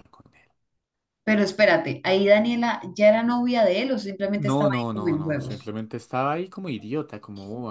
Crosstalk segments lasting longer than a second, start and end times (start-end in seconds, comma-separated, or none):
4.4-5.7